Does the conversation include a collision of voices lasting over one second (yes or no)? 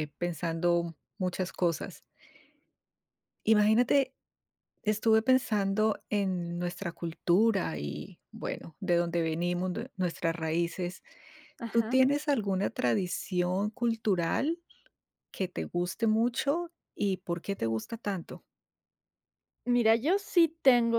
no